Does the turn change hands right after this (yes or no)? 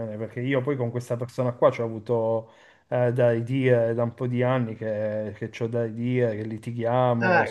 yes